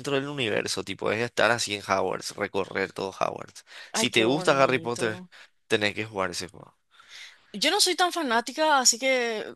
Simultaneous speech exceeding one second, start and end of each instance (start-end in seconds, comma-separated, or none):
3.9-5.2